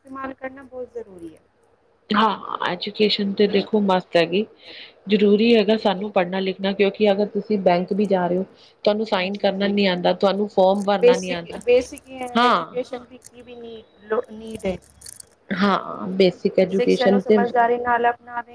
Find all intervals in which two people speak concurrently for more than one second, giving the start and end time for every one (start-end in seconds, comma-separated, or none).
none